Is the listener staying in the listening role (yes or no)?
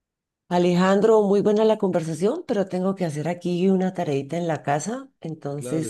no